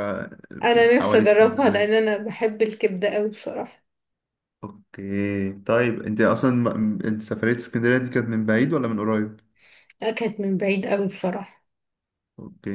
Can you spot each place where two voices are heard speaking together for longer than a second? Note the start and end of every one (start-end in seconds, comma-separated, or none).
0.7-2.0